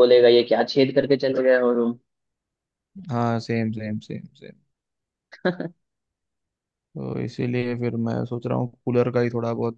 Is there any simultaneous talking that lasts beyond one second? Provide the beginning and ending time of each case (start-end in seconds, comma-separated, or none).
none